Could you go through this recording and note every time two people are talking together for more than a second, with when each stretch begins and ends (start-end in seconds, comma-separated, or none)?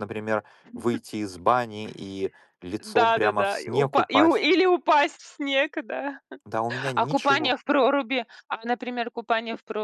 3.0-4.5